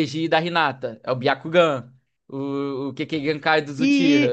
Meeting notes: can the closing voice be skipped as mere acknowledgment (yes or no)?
no